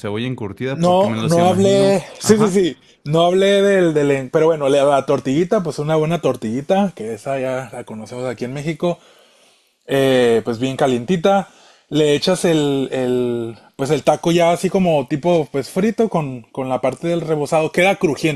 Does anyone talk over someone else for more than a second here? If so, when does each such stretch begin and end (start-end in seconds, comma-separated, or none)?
0.7-2.6